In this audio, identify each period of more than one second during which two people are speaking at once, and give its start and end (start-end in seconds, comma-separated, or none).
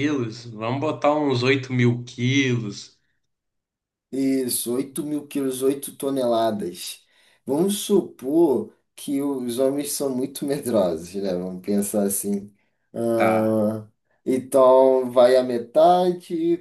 none